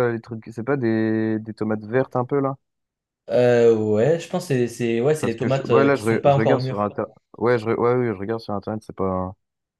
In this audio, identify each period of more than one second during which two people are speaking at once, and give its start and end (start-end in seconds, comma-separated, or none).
5.2-6.8